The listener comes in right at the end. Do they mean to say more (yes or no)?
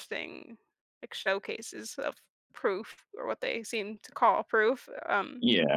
yes